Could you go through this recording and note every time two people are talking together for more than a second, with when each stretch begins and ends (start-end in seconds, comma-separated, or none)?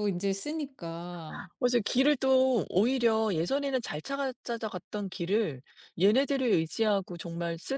none